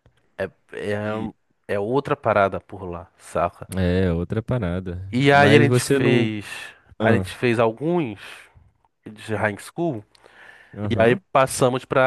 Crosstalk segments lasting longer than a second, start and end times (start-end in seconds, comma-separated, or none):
5.1-6.3